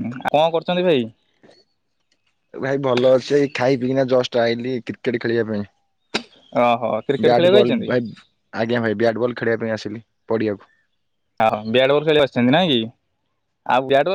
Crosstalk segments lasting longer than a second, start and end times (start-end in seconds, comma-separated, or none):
none